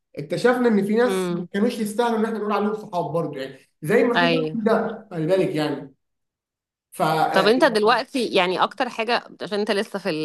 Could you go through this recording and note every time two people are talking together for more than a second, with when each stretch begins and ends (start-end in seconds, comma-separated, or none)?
none